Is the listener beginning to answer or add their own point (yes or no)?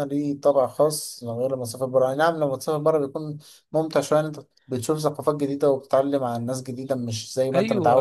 yes